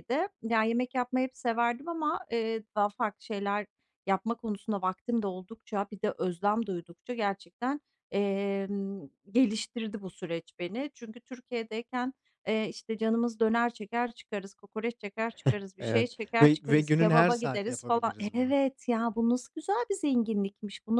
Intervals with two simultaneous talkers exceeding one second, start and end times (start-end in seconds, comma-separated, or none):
15.8-18.6